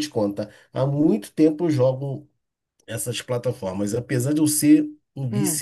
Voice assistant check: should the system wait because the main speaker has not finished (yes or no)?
yes